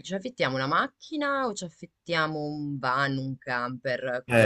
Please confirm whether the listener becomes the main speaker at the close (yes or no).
yes